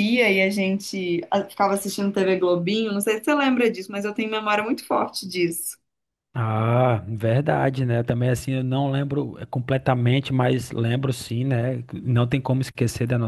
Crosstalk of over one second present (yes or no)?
no